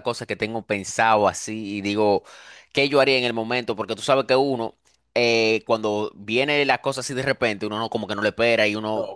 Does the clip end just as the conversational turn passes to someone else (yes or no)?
no